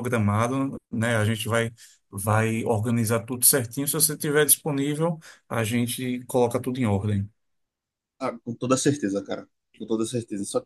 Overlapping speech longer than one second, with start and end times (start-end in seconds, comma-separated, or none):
none